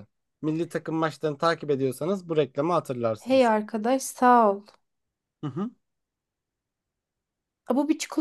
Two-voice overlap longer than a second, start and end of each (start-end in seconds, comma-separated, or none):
none